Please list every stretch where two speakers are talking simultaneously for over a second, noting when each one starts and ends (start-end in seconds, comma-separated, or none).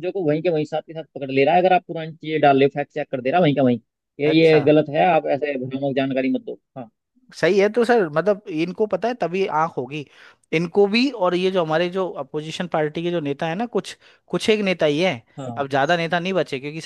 none